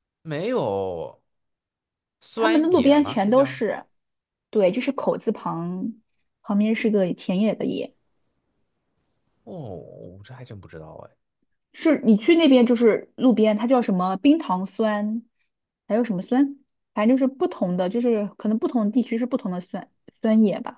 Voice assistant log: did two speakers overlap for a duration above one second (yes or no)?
yes